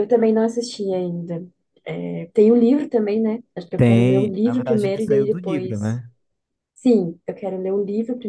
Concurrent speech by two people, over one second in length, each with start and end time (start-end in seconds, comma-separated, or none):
3.8-6.0